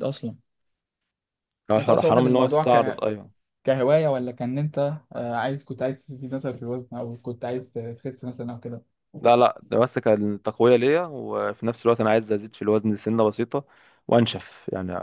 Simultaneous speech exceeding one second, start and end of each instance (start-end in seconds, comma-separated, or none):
1.8-3.0